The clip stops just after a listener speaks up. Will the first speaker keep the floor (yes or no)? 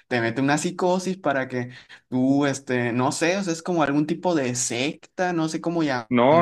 no